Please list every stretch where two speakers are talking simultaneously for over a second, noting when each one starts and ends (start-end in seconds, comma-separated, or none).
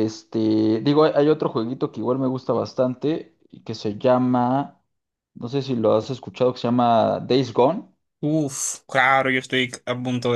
none